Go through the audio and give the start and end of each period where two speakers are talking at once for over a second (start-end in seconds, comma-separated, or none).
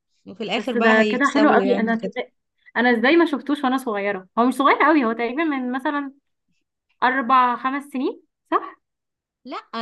0.6-2.1